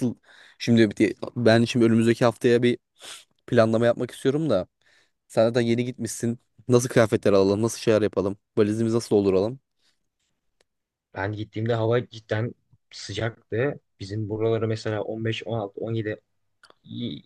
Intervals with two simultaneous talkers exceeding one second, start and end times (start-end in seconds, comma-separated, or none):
none